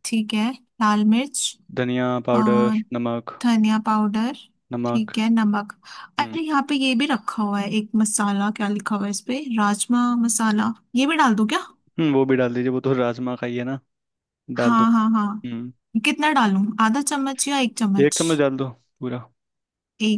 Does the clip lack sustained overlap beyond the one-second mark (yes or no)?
yes